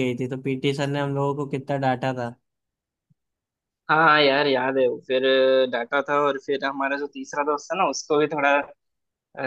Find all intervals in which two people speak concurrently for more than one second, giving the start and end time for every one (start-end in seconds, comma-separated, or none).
none